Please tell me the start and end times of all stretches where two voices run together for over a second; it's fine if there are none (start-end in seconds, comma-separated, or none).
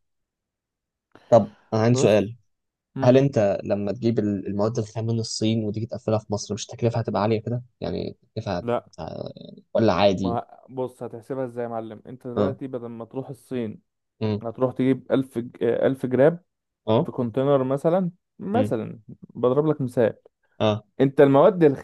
none